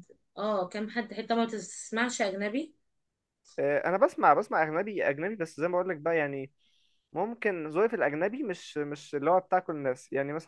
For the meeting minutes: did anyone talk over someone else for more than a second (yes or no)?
no